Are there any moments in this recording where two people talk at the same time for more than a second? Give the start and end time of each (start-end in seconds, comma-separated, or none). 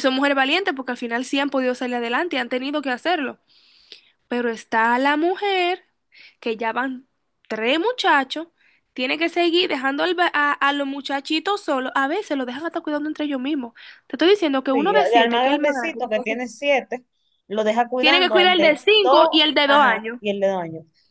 14.7-16.0, 18.0-20.2